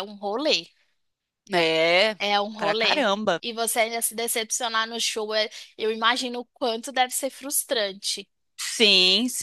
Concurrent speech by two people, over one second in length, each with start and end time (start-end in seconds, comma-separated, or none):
none